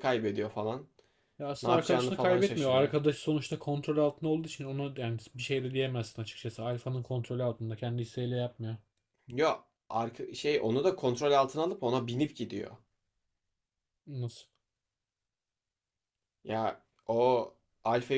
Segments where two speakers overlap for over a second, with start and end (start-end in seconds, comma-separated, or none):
1.6-2.9